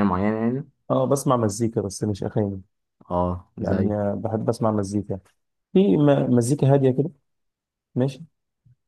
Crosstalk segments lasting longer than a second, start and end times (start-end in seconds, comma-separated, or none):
none